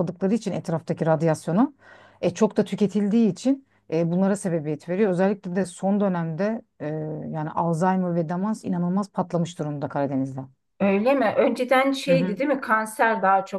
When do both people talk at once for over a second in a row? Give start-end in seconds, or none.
none